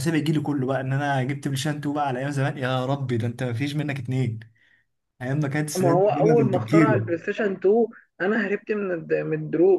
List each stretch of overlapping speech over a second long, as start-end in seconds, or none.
5.8-7.1